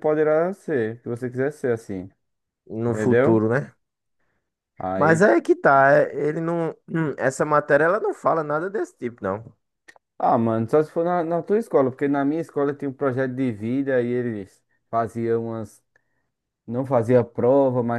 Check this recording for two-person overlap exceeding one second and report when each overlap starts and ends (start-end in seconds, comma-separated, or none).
none